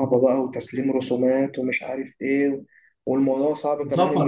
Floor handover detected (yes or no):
yes